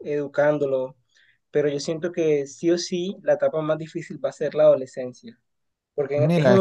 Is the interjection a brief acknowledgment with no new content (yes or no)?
yes